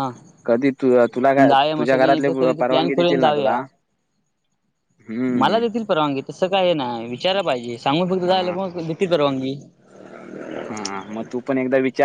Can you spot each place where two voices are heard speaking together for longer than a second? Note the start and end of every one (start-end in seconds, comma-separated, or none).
1.8-3.6